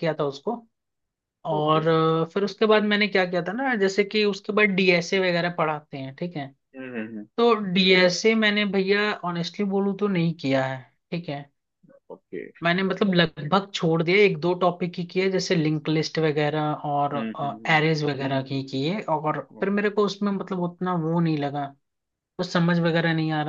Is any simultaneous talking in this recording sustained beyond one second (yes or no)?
no